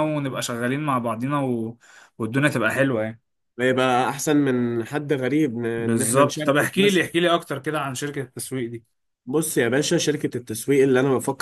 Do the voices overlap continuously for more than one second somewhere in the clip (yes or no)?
yes